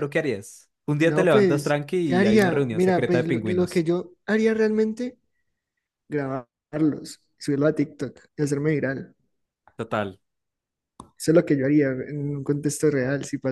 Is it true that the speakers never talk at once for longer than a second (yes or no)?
no